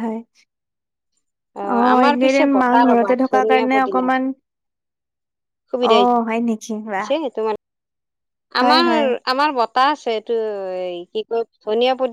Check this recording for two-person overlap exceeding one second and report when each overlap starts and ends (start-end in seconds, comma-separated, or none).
1.9-4.1